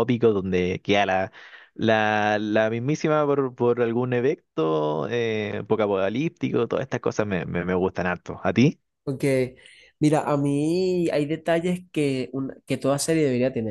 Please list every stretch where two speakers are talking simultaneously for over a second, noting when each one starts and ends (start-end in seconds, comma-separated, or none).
none